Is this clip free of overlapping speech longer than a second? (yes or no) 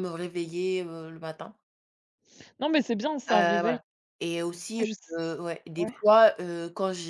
yes